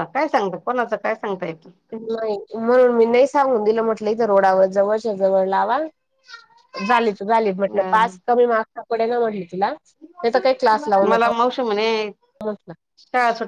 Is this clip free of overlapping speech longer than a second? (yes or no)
yes